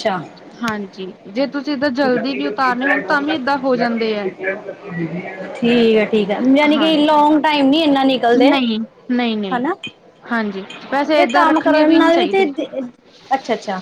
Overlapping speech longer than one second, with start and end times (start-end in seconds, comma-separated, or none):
10.8-12.4